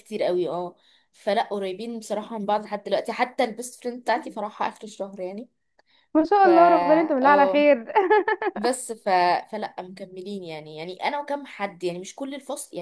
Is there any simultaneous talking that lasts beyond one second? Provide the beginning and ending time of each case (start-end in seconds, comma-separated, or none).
6.4-7.7